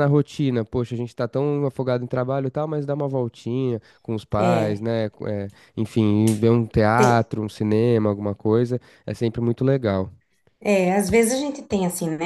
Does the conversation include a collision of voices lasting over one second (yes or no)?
no